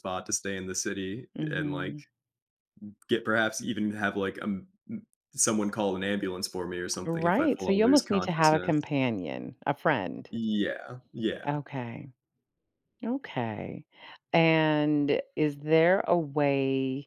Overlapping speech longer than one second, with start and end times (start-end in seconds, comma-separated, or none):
7.0-8.7